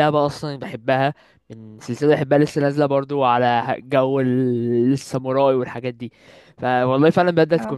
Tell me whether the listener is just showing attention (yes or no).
yes